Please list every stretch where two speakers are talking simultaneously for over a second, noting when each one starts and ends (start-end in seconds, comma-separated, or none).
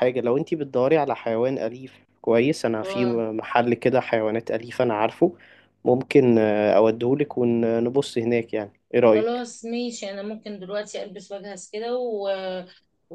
none